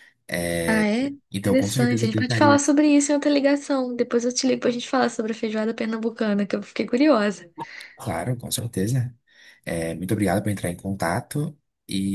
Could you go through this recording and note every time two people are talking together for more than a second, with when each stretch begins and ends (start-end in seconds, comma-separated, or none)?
1.3-2.6